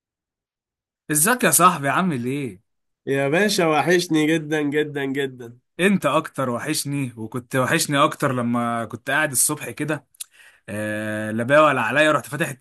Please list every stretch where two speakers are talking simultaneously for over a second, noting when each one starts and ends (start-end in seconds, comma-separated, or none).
none